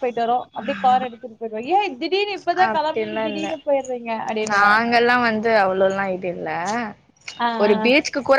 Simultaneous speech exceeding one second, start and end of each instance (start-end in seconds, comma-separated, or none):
none